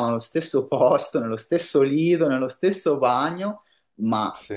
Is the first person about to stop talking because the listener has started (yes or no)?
no